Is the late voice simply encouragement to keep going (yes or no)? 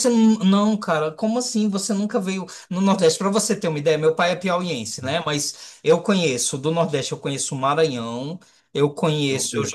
yes